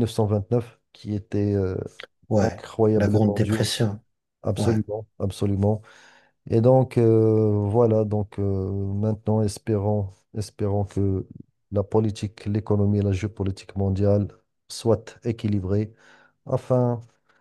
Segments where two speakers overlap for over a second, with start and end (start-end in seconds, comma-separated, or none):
2.4-3.8